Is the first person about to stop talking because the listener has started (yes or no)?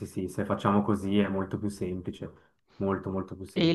yes